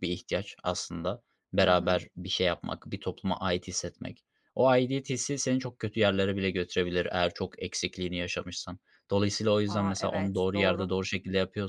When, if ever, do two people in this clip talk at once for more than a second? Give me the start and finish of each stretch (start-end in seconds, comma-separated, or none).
9.7-10.9